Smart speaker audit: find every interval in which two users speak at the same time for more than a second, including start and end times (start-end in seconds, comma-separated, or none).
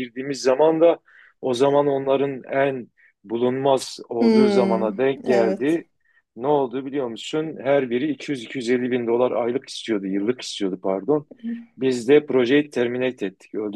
4.2-5.8